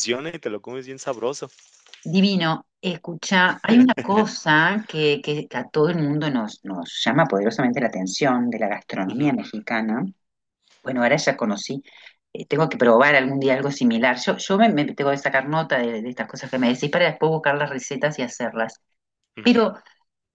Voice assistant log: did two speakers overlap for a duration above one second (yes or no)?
no